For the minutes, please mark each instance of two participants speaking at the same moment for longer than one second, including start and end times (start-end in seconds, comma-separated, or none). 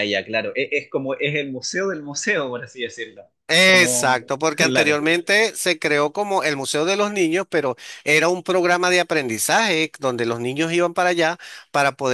3.6-5.0